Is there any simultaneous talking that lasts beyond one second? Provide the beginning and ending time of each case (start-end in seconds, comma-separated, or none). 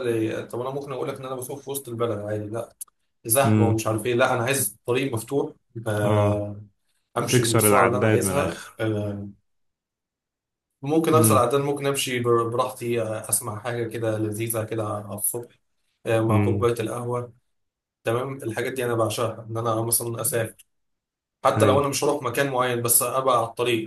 7.3-8.8